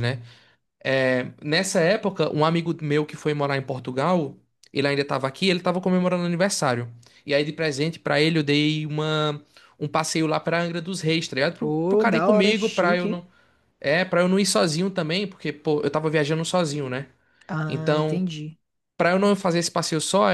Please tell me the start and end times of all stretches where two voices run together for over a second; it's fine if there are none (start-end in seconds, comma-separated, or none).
11.6-13.2